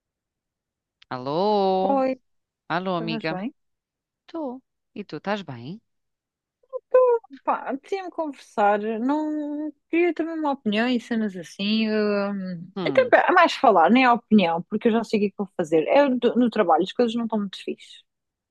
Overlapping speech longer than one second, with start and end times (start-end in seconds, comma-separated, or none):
none